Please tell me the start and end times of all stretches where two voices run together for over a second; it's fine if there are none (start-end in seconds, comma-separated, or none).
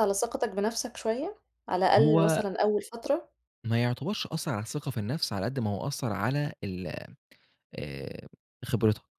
none